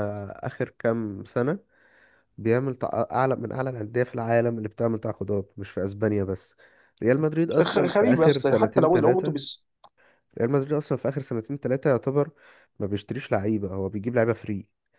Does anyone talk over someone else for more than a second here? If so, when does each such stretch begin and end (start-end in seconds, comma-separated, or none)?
7.6-9.3